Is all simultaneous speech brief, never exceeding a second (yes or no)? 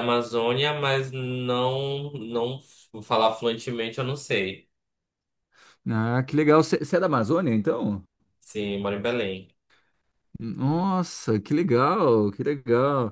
yes